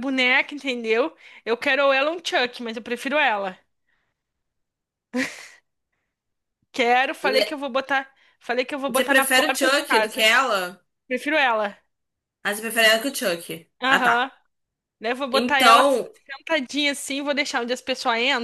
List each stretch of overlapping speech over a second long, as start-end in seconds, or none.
8.9-10.3